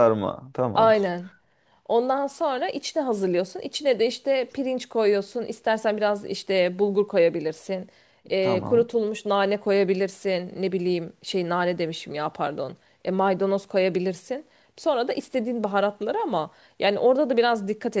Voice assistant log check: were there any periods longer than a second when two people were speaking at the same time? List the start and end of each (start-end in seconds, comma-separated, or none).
none